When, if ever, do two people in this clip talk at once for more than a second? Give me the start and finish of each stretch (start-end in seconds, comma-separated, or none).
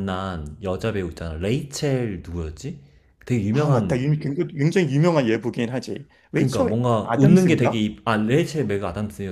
6.3-7.8